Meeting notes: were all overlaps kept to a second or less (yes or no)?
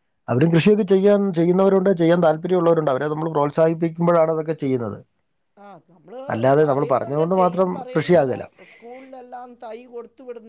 no